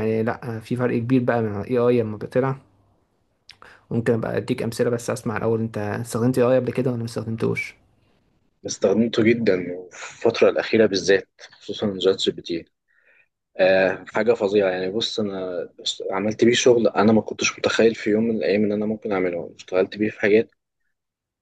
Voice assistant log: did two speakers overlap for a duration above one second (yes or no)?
no